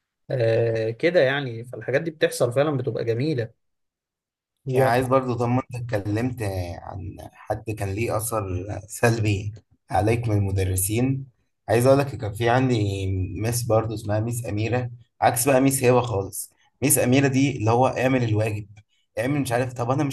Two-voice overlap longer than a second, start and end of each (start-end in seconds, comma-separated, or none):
none